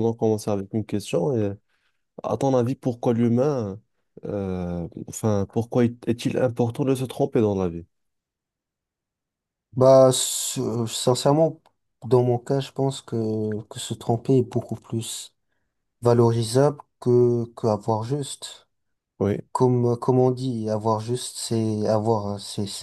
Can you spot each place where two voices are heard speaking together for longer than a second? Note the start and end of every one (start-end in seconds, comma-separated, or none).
none